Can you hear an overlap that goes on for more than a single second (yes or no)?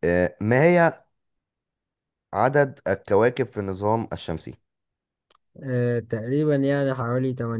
no